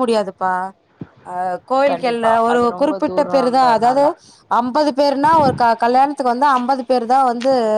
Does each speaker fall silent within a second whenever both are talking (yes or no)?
no